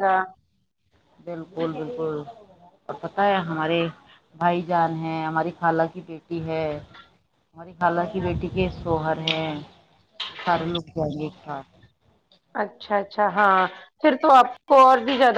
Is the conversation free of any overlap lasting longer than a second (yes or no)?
yes